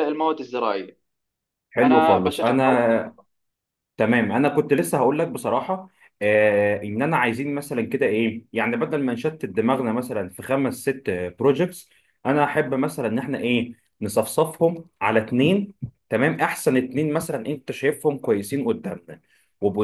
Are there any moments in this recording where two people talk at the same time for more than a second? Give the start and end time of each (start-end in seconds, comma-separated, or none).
1.8-3.1